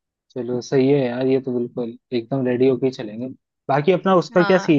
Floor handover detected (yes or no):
no